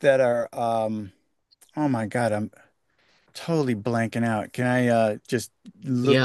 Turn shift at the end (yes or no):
yes